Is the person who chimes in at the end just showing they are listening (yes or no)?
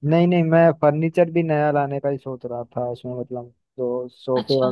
yes